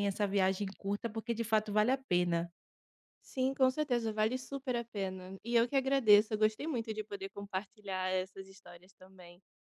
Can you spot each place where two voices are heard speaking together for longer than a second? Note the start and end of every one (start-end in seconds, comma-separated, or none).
none